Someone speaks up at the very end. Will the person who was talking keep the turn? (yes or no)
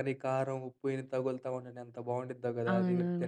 no